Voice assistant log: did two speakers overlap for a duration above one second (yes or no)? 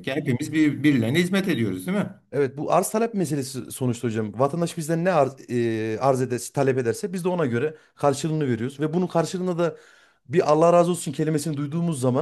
no